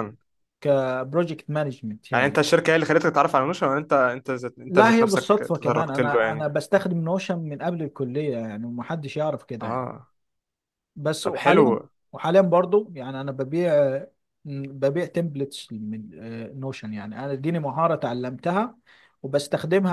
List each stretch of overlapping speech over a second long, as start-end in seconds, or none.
4.7-6.5